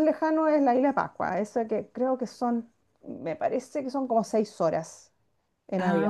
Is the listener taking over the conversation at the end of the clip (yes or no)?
no